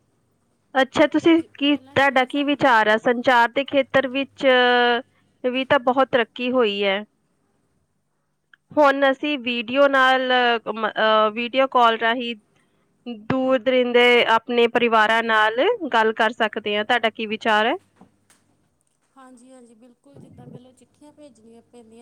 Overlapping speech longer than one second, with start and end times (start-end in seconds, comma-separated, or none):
1.2-2.6